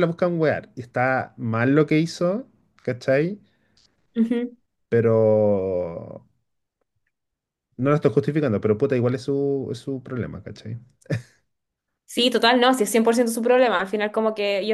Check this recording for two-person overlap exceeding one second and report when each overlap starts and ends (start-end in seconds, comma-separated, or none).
none